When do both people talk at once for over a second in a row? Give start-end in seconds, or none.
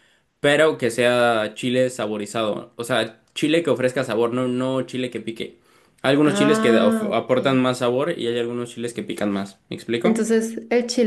6.2-7.6